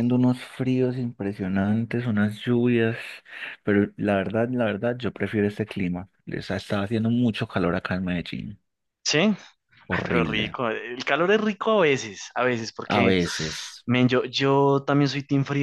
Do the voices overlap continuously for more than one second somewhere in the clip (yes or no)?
no